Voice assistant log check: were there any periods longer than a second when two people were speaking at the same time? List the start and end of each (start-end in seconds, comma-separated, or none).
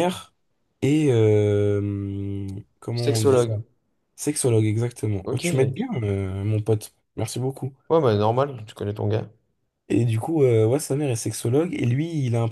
none